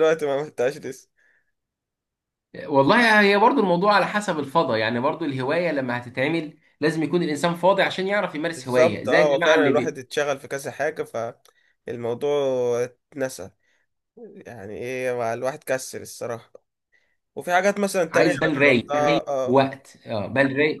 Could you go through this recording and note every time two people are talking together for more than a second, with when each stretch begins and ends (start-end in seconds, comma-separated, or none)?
8.5-10.0, 18.1-19.6